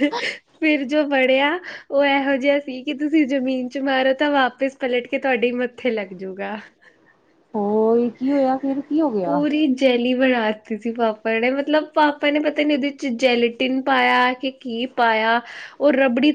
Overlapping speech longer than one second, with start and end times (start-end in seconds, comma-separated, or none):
none